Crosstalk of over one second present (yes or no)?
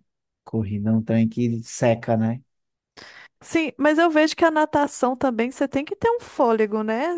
no